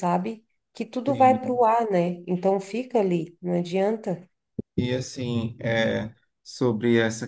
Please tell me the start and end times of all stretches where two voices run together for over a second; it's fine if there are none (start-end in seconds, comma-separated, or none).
none